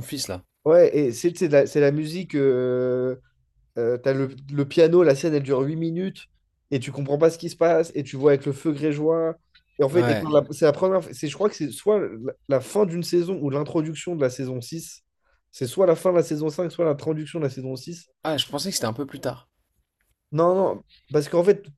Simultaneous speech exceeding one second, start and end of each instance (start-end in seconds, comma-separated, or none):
none